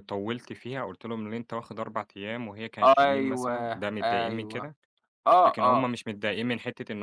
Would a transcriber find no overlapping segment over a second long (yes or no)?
no